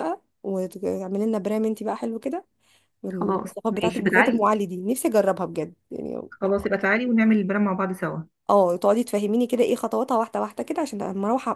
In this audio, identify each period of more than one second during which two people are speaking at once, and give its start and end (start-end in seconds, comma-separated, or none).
3.1-4.4